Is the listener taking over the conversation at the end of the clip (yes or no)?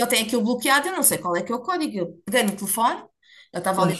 no